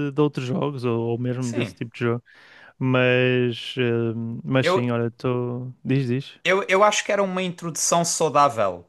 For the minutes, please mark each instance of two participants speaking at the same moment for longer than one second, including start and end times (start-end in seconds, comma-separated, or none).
none